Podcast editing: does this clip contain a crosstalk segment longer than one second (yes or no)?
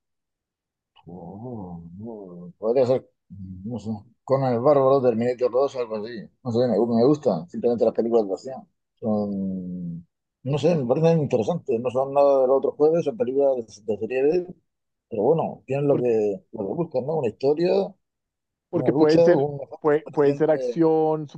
yes